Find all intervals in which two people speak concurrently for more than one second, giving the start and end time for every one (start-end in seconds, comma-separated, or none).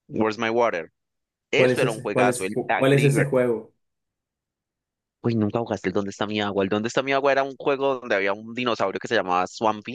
1.6-3.4